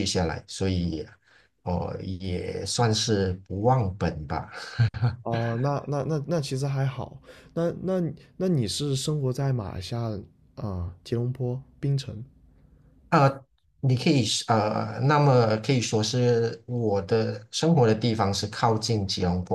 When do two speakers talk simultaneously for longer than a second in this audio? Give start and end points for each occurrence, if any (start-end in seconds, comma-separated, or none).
none